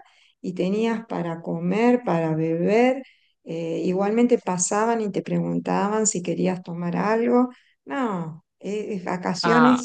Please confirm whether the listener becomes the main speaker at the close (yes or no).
no